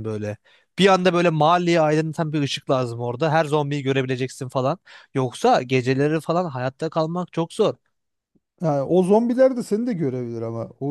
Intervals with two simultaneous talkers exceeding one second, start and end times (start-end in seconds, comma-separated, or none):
none